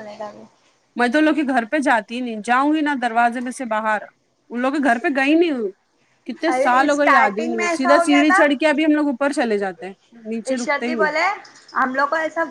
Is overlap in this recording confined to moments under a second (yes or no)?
no